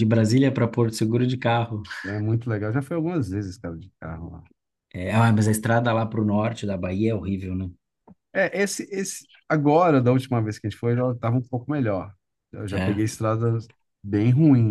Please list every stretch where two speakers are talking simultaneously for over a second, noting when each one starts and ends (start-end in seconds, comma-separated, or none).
none